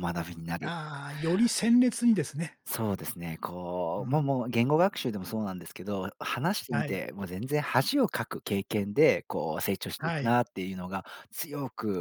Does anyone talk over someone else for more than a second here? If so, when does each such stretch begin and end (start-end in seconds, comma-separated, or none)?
none